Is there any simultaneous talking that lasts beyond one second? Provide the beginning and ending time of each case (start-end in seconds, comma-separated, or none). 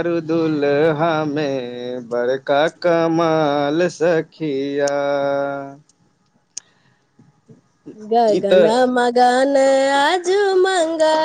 none